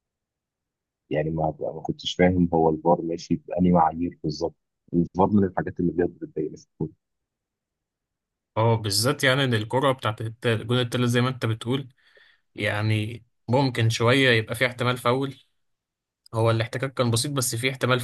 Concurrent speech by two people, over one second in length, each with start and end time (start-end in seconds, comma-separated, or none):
none